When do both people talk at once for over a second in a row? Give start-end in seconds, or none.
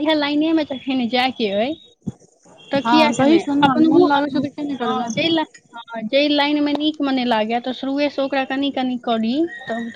2.9-5.1